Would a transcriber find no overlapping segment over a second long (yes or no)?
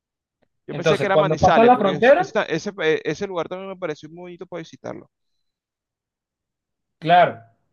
no